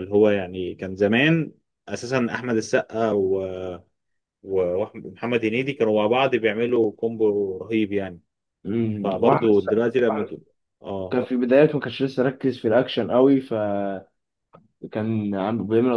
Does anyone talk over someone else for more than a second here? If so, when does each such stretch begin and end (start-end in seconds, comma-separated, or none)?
9.0-10.4